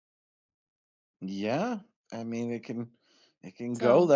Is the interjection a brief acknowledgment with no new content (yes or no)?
yes